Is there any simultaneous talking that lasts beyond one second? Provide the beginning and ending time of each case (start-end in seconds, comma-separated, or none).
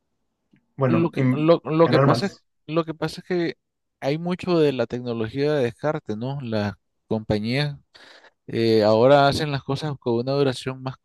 0.9-2.4